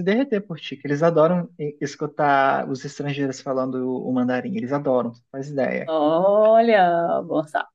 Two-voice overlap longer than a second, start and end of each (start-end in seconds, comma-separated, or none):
none